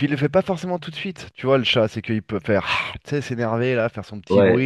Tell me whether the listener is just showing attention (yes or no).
no